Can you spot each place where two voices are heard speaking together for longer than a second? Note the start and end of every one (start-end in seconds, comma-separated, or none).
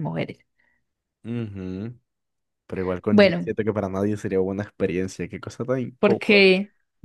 none